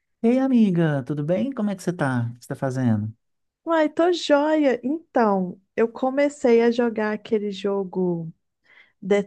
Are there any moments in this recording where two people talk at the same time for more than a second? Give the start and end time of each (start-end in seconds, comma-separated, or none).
none